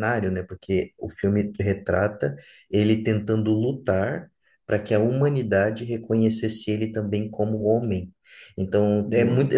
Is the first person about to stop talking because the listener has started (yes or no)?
no